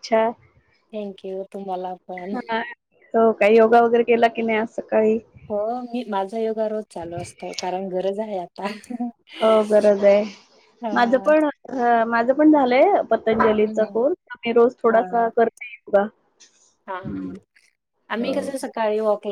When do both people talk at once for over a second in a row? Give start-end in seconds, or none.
none